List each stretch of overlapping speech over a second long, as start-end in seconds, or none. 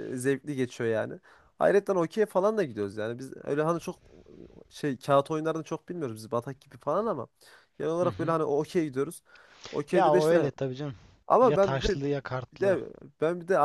11.4-12.8